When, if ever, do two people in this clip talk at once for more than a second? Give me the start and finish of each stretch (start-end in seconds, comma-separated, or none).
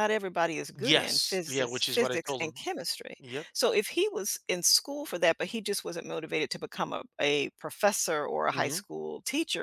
0.8-2.6